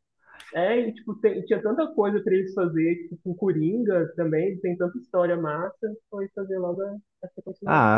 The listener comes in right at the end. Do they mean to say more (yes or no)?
yes